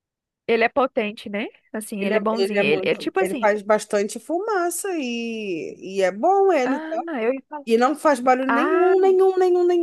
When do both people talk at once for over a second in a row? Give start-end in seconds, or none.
2.0-3.5